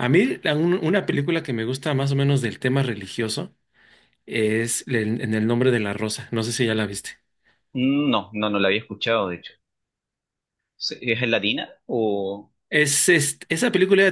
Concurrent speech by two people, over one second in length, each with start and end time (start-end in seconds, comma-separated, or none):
none